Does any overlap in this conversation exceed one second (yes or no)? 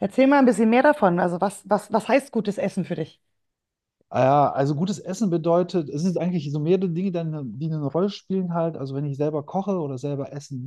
no